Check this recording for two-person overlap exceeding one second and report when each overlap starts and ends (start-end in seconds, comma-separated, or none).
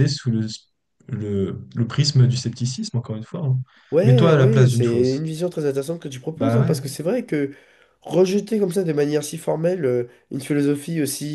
4.0-5.3